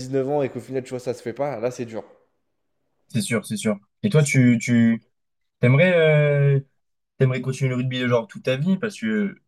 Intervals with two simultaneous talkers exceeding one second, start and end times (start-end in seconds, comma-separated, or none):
none